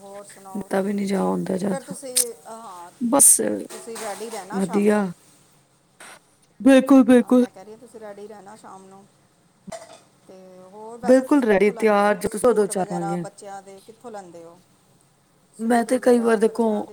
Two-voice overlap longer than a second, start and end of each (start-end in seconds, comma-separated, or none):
11.1-13.2